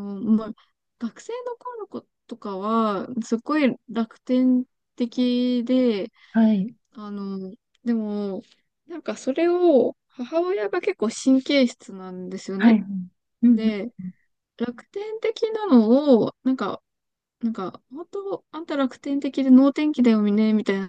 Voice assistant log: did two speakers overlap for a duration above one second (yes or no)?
no